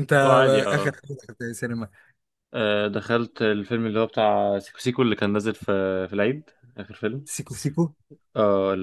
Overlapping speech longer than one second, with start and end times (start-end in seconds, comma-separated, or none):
none